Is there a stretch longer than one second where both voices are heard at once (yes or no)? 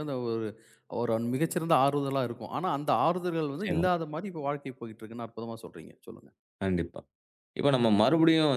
no